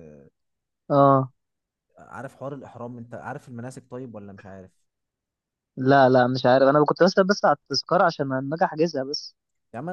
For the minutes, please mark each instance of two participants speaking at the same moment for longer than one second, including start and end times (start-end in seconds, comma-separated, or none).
none